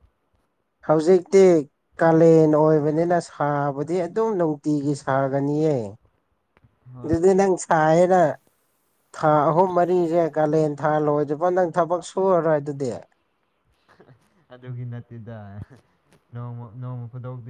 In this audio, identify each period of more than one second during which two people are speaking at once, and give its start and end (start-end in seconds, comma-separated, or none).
none